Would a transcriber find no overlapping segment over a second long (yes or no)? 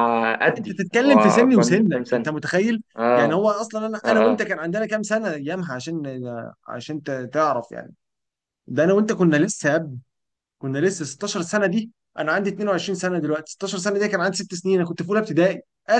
no